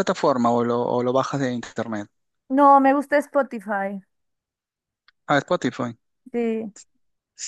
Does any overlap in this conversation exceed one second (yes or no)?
no